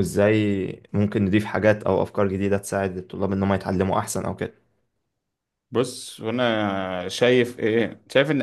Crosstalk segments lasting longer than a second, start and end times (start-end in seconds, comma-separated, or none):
none